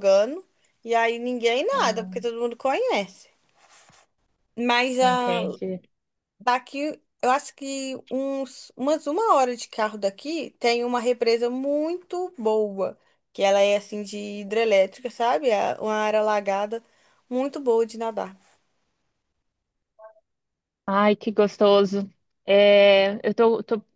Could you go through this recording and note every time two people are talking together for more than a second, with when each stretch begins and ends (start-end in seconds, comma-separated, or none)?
none